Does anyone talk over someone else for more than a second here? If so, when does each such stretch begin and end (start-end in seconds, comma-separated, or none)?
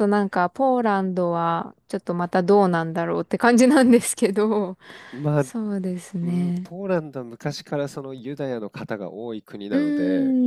none